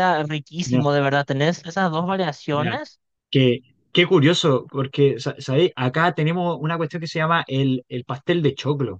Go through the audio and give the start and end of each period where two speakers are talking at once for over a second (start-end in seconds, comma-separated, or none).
none